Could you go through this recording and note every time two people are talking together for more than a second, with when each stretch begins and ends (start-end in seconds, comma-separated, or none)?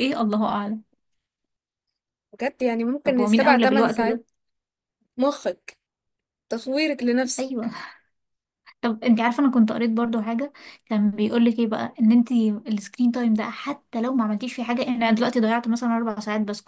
3.0-4.2